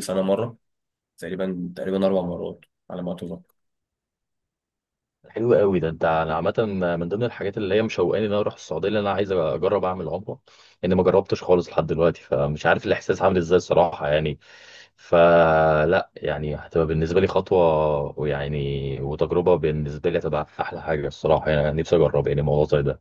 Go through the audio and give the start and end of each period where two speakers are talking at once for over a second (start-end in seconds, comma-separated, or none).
none